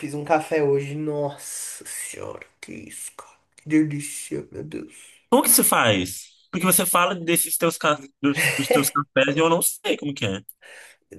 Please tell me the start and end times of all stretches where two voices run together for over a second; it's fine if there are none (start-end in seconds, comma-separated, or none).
none